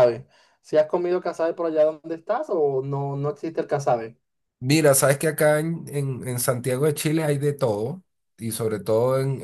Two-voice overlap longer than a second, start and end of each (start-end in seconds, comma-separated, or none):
none